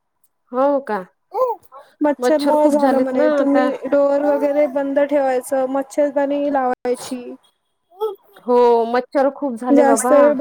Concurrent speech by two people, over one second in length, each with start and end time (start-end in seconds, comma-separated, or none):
2.2-3.6